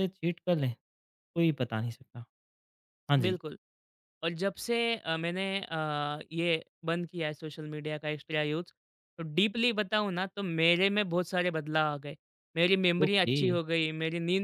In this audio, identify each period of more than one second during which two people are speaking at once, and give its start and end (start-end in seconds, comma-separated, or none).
none